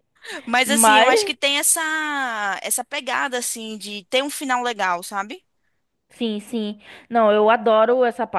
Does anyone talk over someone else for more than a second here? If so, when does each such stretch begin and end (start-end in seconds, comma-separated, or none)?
none